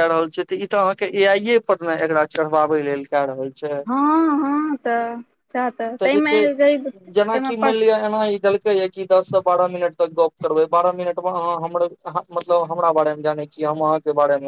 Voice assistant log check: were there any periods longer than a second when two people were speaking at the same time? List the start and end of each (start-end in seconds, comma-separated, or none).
none